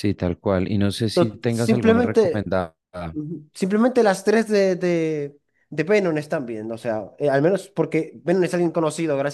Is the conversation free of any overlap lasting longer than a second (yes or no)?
no